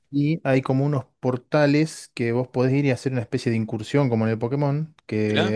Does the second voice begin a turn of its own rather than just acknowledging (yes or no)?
no